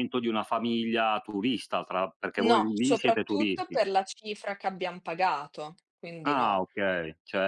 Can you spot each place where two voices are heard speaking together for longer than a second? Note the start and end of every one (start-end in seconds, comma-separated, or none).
2.4-3.8